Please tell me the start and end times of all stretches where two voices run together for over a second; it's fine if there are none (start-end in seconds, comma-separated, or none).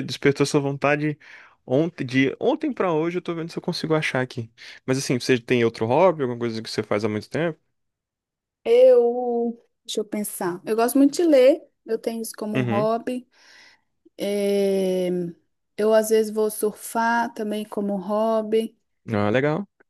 none